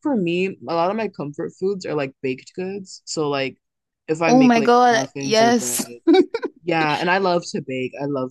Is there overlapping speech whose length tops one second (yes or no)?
yes